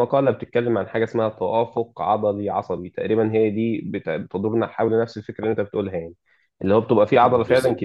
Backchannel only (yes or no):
yes